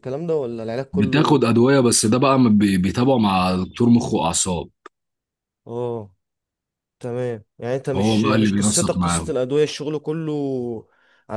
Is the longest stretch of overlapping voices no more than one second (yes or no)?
no